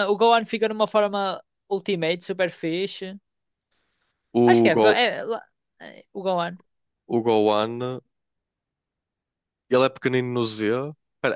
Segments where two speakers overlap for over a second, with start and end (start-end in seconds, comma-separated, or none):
none